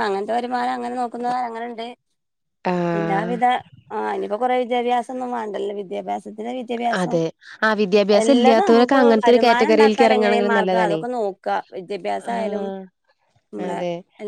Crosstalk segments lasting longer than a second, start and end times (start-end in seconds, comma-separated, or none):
8.2-11.0